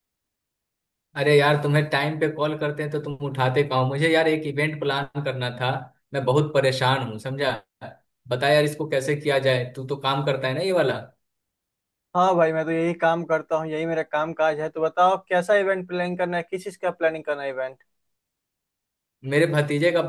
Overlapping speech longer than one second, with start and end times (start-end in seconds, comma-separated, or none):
none